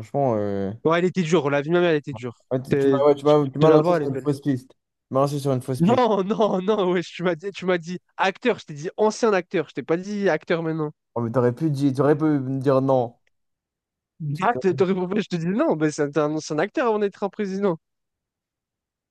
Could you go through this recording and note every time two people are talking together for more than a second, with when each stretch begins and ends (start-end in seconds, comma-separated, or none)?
2.5-4.3